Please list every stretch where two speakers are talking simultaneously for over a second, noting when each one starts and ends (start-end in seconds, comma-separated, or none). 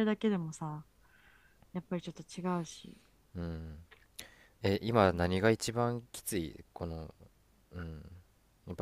none